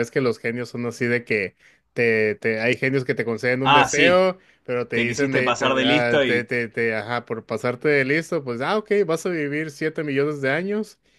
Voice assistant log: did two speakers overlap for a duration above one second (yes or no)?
yes